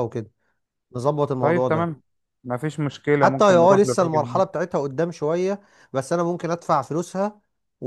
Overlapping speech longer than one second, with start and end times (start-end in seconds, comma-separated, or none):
3.2-4.5